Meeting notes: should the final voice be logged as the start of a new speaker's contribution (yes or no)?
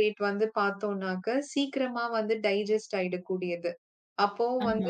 no